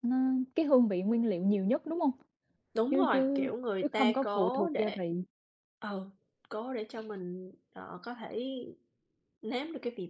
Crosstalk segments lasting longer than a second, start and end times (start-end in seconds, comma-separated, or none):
2.9-5.0